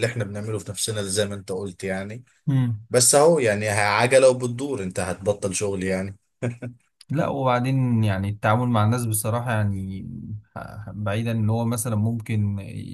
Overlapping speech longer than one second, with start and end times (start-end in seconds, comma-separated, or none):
none